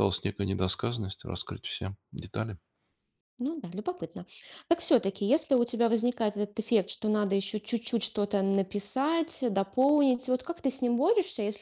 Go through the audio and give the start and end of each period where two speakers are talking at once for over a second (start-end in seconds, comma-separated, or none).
none